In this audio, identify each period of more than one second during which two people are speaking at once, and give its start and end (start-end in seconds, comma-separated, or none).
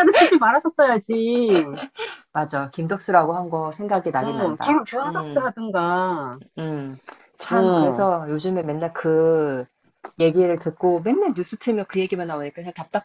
4.2-5.5